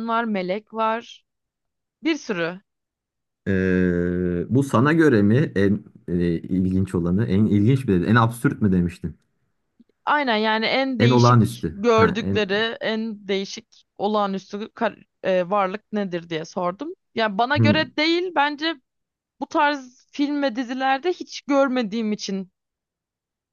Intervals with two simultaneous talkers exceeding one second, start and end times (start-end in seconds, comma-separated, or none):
11.0-12.4